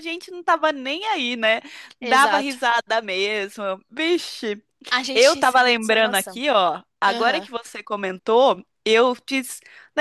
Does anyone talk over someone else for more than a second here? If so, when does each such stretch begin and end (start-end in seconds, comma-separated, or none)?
5.1-6.4